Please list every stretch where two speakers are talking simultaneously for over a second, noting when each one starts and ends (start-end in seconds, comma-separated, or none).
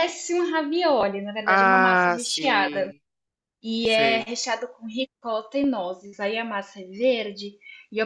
1.4-2.9